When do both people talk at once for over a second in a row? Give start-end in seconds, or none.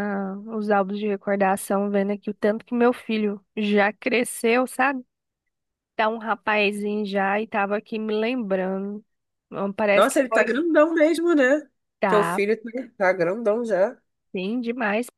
none